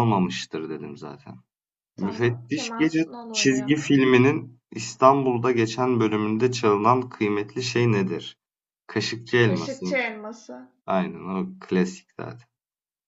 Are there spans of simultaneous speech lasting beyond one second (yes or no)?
yes